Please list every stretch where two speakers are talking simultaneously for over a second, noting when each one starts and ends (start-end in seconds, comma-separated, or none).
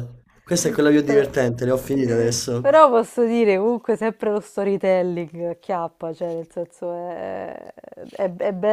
none